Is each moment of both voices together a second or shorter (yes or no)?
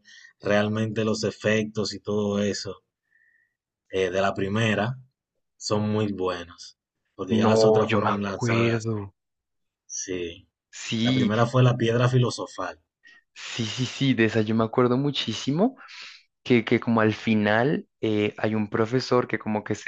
no